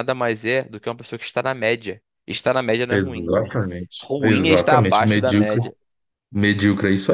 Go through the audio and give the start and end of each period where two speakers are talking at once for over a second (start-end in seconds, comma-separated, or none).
4.0-5.6